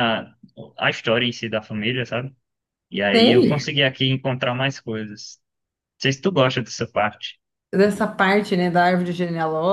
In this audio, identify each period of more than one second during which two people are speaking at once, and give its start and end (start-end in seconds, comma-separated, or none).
none